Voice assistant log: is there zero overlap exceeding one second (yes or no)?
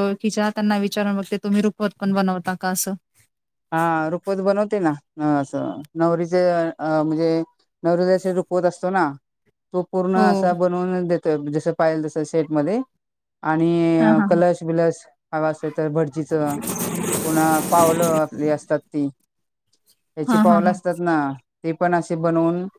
yes